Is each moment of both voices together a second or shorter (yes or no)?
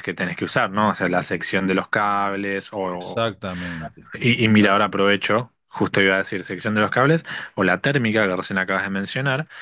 yes